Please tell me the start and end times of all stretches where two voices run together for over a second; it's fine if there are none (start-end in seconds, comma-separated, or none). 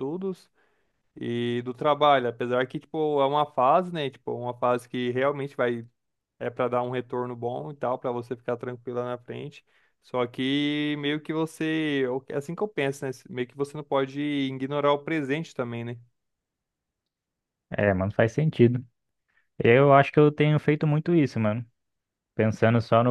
none